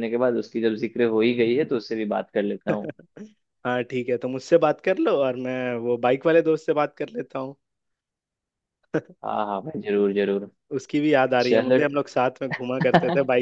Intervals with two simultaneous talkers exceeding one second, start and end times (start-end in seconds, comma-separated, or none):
none